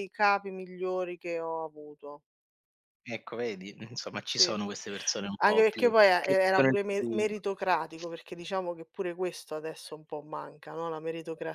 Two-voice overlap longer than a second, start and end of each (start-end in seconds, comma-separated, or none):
5.4-7.4